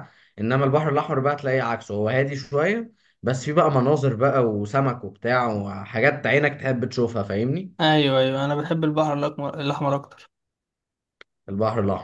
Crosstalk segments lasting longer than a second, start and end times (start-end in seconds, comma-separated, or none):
none